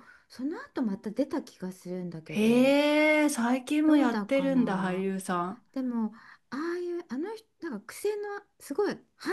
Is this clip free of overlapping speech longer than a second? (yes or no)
no